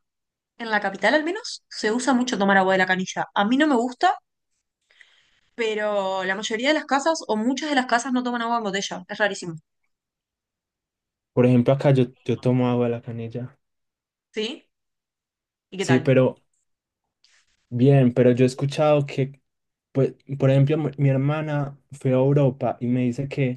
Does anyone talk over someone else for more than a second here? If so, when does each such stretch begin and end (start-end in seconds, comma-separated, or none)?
none